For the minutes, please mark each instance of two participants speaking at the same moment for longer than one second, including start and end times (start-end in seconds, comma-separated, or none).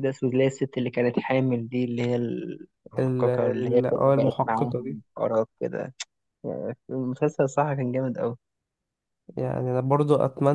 3.0-5.0